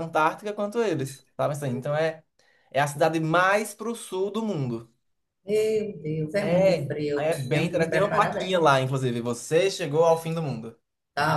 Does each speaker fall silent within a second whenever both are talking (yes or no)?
no